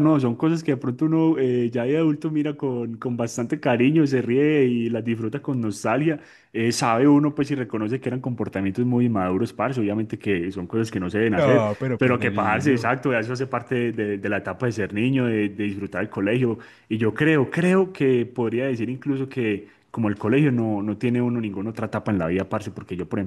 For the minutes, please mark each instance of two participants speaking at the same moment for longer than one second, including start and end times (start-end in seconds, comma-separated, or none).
11.3-12.9